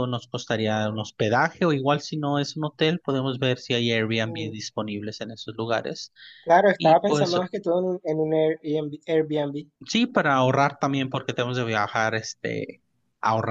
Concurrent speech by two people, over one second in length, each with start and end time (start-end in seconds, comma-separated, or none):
none